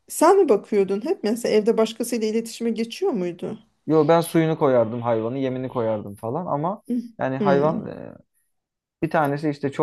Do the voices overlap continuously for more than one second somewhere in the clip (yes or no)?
no